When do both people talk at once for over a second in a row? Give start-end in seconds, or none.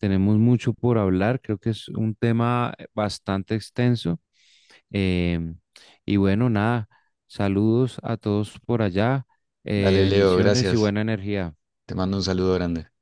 9.7-10.9